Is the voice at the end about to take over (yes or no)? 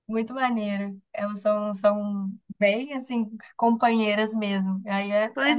yes